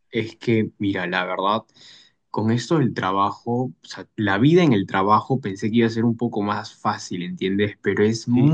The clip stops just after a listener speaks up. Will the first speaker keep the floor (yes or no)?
yes